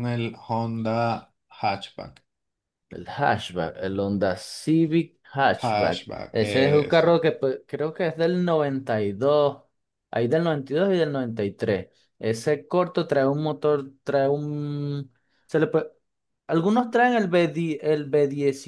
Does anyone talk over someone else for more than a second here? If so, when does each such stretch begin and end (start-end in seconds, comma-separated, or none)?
5.6-7.2